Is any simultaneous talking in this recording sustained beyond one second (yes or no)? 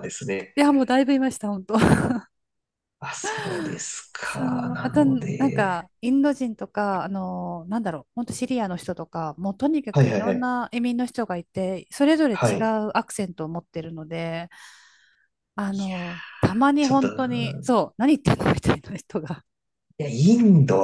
yes